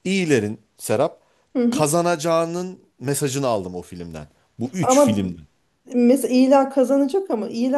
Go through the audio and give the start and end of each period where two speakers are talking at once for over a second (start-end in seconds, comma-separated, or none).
none